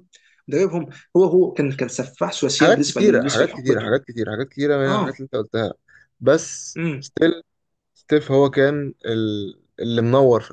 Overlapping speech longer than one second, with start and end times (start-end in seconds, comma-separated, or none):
2.5-4.0